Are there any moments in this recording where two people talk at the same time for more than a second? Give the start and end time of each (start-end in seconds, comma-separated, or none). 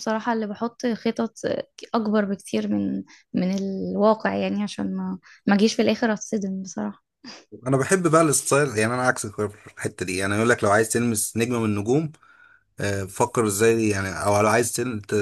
none